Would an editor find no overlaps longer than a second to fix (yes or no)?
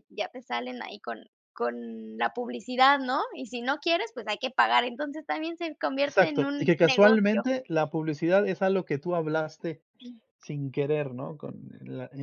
no